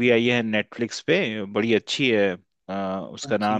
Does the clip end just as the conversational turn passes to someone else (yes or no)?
no